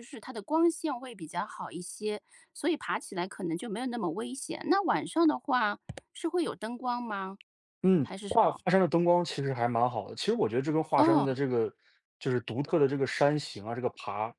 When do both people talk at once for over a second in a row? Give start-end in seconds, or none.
none